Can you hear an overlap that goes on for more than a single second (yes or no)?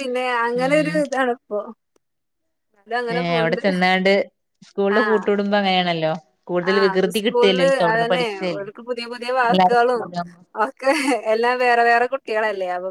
yes